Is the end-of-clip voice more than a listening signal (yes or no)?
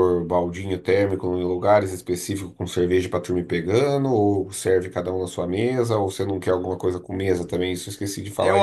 yes